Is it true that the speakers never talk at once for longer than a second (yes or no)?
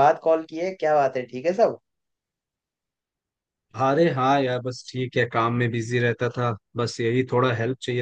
yes